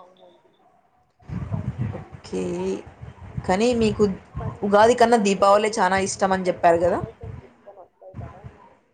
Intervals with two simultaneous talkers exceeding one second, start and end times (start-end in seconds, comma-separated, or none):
5.2-7.0